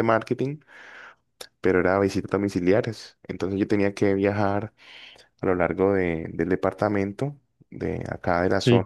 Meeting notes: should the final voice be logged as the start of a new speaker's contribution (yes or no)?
no